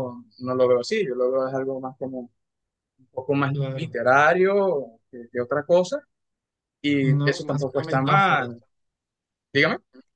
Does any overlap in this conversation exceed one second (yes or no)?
yes